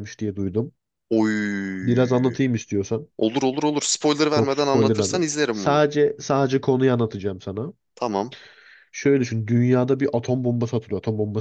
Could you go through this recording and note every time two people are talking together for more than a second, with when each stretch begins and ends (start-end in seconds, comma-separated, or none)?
4.3-5.8